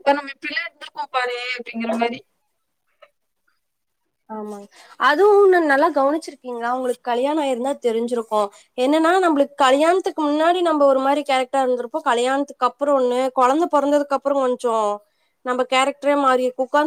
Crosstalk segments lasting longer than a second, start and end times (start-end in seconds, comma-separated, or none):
none